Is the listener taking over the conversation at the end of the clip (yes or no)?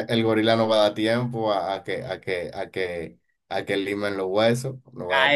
yes